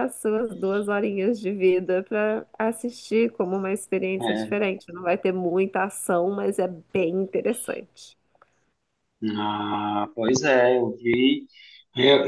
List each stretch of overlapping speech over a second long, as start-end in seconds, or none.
none